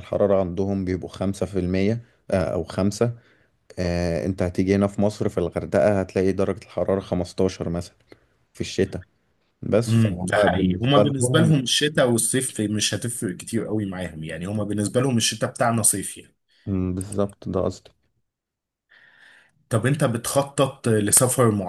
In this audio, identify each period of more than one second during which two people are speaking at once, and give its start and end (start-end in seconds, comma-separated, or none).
9.9-11.5